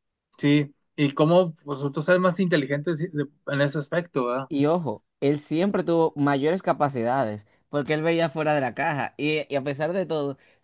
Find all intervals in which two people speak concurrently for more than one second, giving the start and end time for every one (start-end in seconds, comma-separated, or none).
none